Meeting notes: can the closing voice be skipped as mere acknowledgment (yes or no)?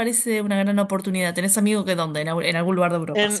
no